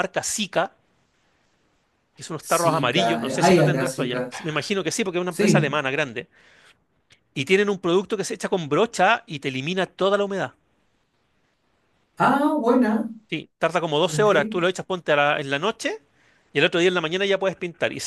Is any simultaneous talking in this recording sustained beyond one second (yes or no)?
yes